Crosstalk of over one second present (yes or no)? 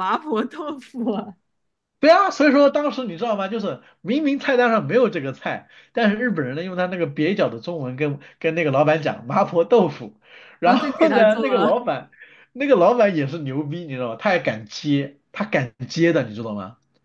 yes